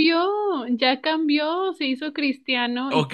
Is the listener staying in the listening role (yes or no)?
no